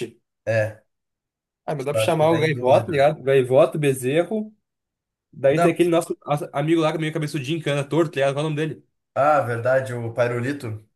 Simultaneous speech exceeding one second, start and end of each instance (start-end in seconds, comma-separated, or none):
1.8-3.1